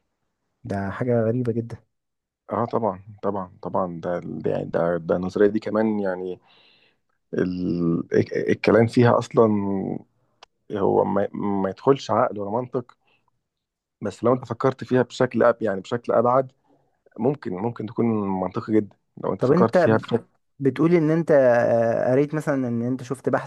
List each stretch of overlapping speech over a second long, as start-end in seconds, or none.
none